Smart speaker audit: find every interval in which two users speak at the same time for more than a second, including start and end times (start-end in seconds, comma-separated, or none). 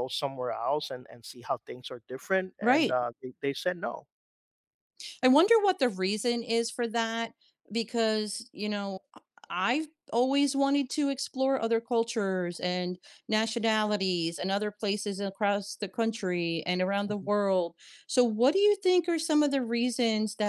none